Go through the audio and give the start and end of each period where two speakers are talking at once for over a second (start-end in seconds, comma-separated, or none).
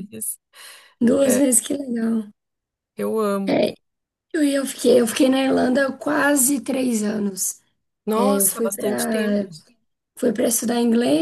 8.2-9.5